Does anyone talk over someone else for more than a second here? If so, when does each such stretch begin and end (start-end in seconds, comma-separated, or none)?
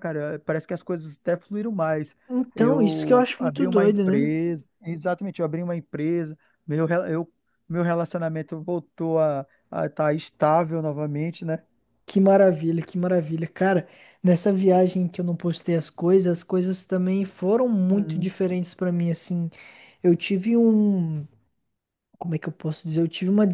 2.5-4.3